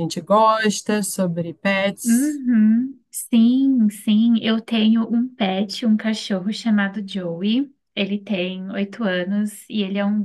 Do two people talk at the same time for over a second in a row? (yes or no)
no